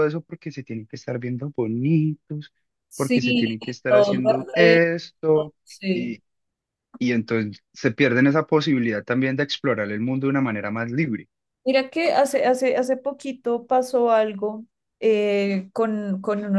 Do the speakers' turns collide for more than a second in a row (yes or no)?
yes